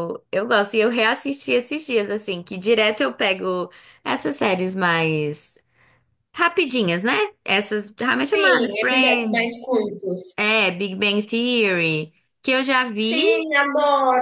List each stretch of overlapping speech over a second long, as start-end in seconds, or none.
8.3-9.6